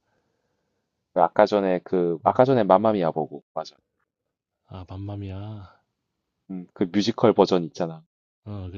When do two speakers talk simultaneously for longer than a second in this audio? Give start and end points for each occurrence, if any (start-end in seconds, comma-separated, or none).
none